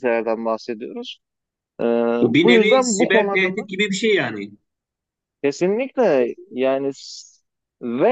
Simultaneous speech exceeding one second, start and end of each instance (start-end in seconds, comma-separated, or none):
2.3-3.7